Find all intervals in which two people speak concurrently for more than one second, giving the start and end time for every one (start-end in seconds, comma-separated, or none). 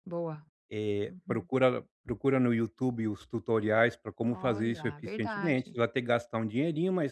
4.3-5.8